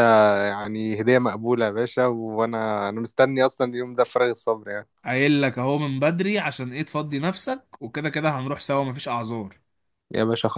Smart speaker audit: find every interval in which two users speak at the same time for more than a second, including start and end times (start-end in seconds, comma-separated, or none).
none